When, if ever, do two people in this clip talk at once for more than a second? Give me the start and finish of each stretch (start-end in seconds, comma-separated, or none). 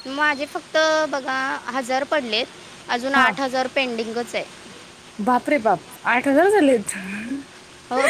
none